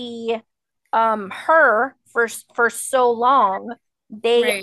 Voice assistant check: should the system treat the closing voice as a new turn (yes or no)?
no